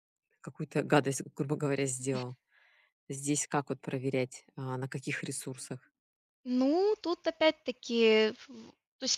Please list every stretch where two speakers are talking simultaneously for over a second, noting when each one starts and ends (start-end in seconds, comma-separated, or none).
none